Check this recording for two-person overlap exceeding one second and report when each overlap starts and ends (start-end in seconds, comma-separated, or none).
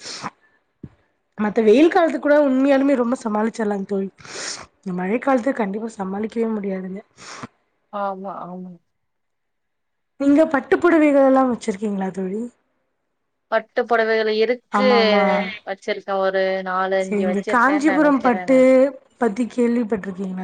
17.0-18.6